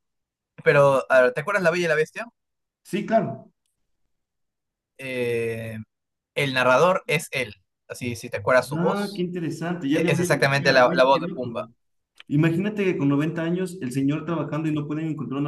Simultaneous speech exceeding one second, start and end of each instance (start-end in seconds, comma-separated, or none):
9.9-11.7